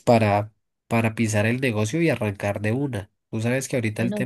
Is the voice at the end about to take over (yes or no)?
no